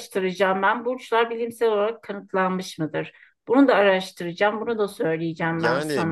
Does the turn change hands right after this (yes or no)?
yes